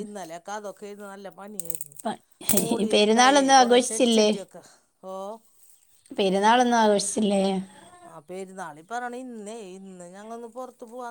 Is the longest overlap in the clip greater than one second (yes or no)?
yes